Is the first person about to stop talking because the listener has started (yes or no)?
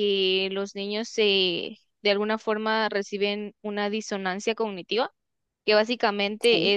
no